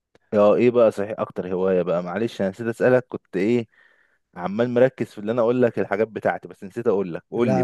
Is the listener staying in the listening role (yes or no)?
no